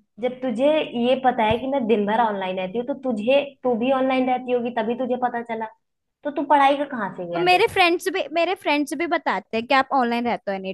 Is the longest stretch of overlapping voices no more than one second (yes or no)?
yes